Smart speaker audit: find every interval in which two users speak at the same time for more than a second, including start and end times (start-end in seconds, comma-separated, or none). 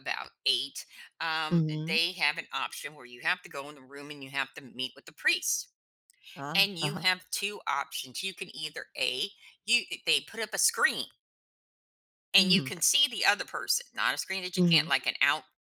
none